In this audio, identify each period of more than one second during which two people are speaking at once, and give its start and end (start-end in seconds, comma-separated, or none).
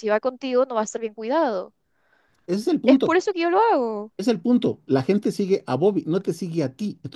none